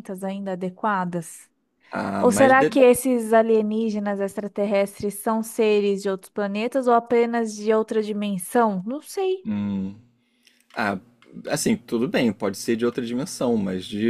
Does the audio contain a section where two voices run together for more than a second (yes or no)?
no